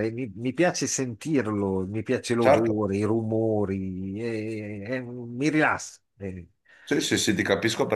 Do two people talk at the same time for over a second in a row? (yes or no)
no